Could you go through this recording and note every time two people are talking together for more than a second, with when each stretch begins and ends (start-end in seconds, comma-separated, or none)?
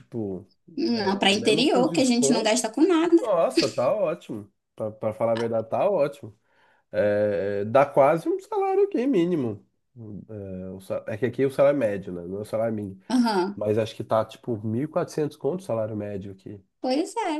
0.9-2.5